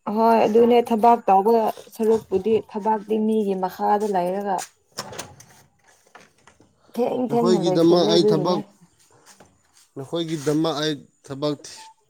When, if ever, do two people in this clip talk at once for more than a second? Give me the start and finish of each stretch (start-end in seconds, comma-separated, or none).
7.3-8.6